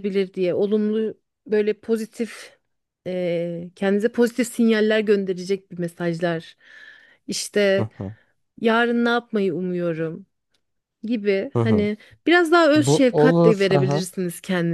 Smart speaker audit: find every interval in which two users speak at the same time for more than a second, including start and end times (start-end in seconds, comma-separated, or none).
12.8-14.1